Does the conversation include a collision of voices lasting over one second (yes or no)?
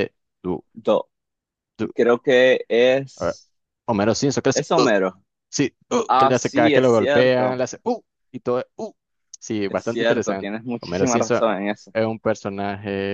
yes